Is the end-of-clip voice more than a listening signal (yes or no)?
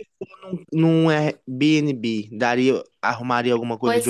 yes